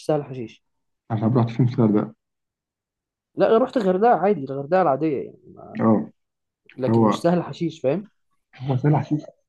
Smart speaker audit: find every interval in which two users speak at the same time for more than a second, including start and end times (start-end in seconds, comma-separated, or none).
none